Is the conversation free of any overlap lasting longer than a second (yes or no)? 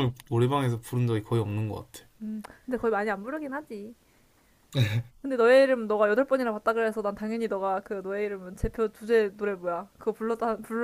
yes